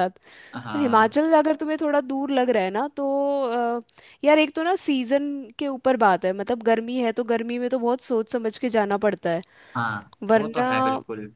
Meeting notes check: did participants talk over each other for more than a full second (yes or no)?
no